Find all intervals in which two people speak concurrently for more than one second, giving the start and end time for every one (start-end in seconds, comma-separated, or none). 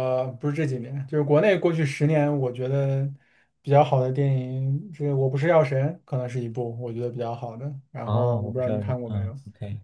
8.0-9.3